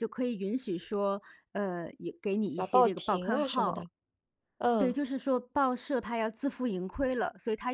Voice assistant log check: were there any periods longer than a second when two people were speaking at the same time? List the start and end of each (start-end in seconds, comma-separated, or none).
2.5-3.8